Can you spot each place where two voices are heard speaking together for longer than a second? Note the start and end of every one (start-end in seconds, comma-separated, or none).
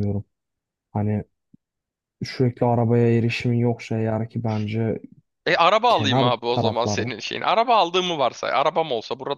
5.9-7.1